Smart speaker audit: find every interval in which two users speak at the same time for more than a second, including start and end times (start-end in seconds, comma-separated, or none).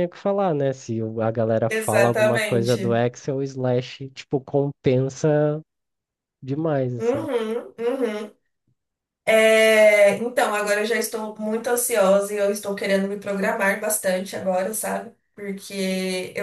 1.7-3.0